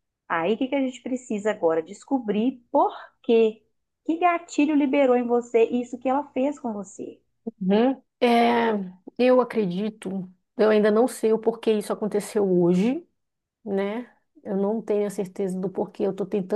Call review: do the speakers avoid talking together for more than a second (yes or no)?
yes